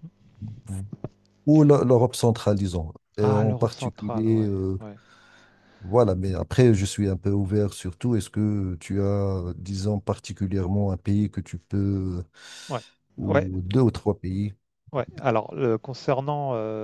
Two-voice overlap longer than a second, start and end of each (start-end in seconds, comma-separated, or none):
3.2-4.8